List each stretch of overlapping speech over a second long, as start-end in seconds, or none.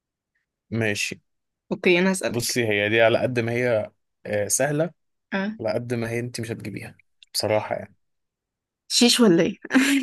none